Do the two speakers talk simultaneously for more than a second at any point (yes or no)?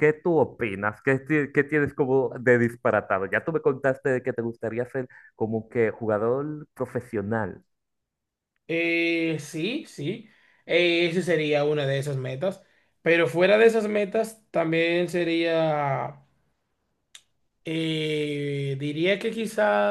no